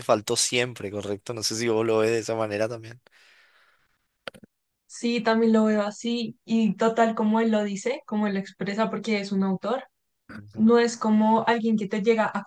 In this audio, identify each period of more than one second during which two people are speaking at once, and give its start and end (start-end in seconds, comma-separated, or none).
none